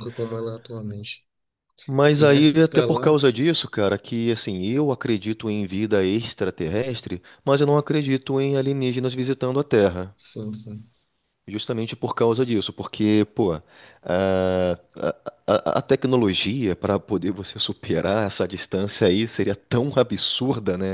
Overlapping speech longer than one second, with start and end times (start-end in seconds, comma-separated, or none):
2.1-3.6